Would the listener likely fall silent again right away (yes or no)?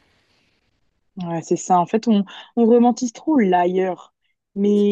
yes